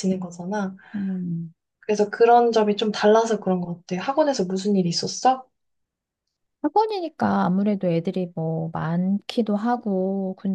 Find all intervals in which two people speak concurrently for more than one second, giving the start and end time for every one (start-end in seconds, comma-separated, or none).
none